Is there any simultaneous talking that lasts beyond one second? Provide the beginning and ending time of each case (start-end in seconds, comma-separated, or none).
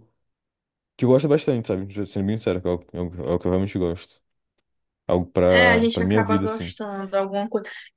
5.5-6.7